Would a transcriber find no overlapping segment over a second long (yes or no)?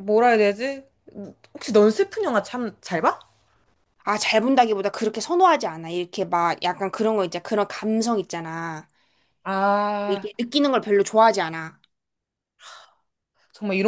yes